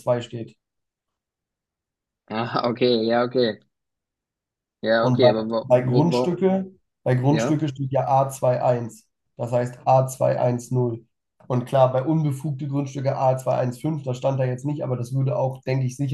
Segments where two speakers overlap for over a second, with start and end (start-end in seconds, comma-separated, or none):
5.0-6.5